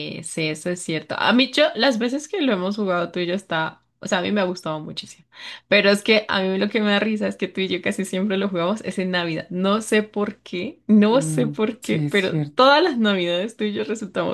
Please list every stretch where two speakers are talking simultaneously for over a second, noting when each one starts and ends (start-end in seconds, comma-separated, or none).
11.1-12.7